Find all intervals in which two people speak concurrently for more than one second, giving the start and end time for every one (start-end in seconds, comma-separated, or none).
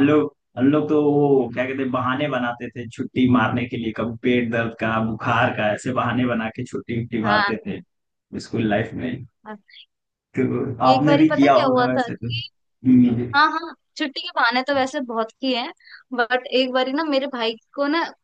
10.9-12.5